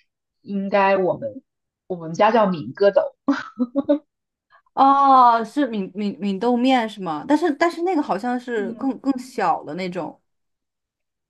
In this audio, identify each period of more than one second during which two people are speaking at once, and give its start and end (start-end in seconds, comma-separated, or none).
none